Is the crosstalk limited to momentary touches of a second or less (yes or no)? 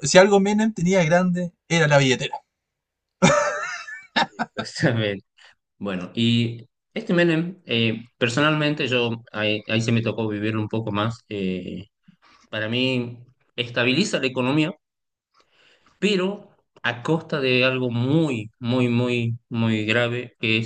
yes